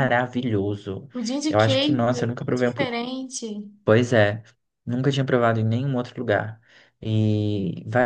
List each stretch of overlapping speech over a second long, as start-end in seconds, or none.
1.5-2.9